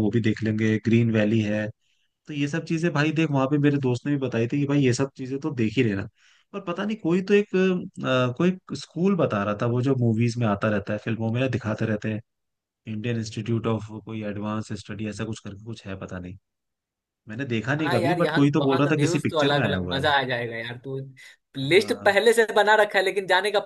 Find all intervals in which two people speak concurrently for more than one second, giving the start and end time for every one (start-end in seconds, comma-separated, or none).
17.8-20.0